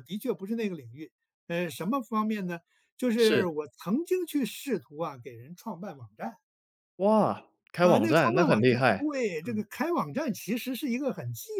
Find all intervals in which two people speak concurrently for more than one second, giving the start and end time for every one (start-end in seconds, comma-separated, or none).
7.8-9.6